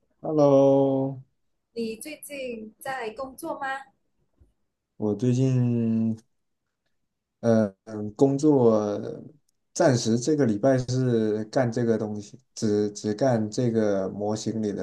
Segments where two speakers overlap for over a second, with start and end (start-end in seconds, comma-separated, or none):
none